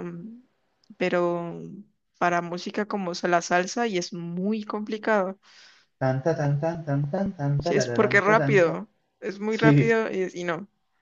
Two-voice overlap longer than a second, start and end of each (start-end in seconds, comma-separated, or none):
7.6-8.8